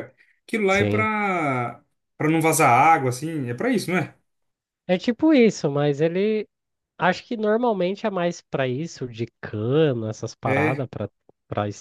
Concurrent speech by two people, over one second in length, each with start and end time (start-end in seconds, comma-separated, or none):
none